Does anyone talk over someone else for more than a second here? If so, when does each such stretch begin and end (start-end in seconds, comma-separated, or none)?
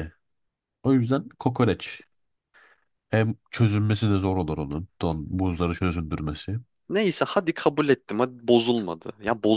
none